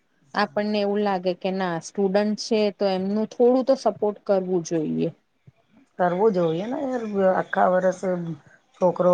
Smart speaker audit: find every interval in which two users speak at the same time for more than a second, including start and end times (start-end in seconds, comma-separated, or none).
none